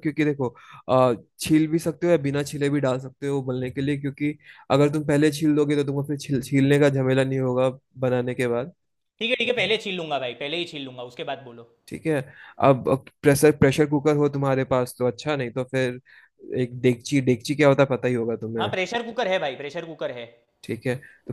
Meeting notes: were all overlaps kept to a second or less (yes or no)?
yes